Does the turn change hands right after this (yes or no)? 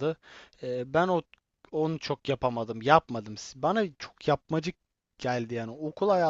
no